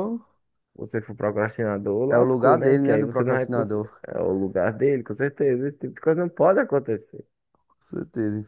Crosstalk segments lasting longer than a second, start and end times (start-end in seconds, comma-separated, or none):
2.1-3.9